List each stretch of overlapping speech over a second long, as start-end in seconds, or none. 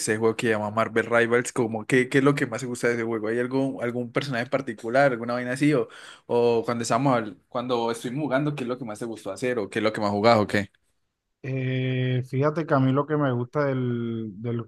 none